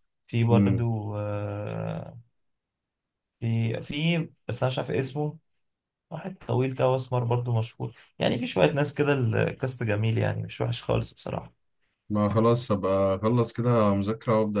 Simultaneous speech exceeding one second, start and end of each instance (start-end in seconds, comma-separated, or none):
none